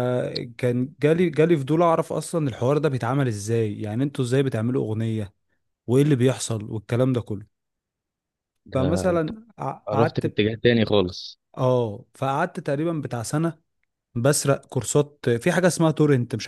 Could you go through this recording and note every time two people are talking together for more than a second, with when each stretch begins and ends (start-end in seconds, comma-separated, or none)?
none